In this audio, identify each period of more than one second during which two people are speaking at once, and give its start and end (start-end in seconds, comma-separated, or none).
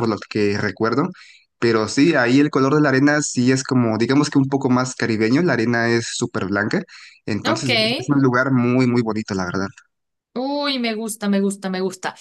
none